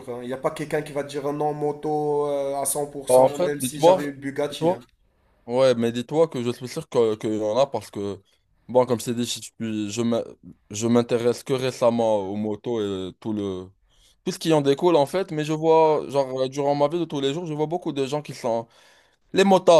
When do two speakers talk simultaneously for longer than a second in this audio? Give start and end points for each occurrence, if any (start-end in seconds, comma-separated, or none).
3.1-4.8